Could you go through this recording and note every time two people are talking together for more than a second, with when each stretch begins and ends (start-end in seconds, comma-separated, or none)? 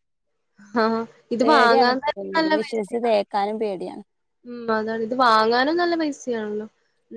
1.4-3.0